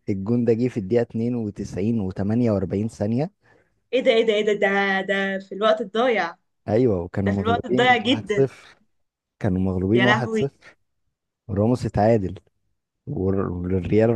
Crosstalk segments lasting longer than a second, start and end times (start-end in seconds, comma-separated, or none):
7.2-8.5